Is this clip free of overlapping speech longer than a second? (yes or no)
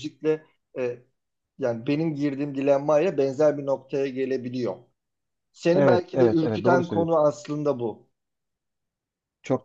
no